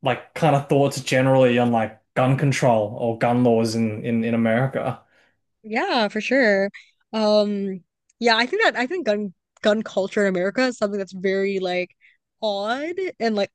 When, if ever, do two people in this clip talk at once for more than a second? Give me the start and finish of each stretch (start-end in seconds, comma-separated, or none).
none